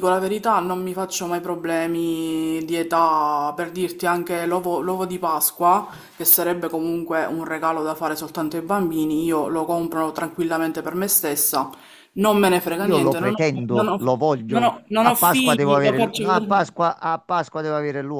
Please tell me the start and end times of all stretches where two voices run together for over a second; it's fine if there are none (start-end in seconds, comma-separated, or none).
12.8-16.5